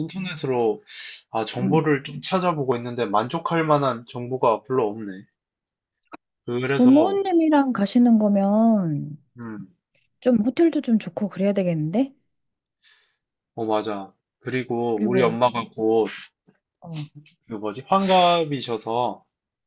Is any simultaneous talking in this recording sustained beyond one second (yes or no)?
no